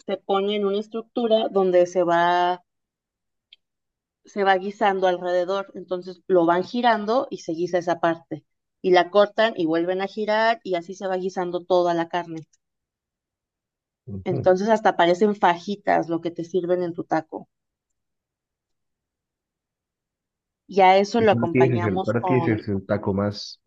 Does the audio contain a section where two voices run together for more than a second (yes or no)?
yes